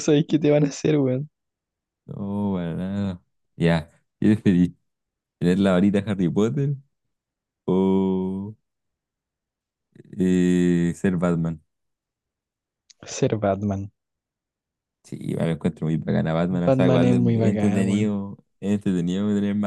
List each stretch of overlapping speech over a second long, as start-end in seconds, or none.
16.5-18.2